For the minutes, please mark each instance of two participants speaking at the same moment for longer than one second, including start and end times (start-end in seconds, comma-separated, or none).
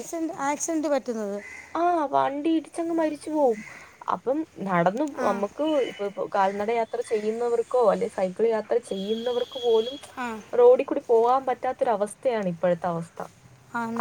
none